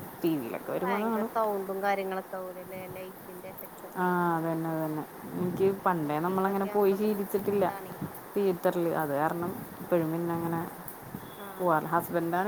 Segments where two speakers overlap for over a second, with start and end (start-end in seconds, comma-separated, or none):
5.6-7.6